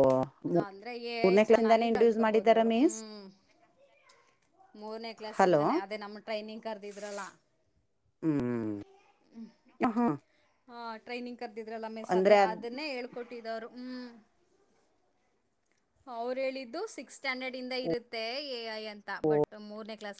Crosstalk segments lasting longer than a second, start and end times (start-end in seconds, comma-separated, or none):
1.1-3.0